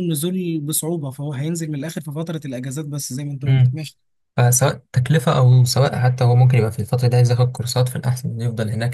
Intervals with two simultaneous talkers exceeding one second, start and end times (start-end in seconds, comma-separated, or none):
none